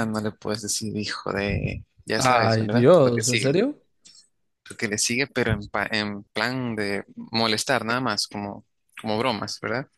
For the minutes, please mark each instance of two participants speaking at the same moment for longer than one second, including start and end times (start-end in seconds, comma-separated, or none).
2.2-3.6